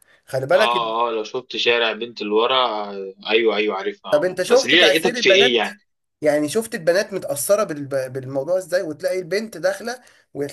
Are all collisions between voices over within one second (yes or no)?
no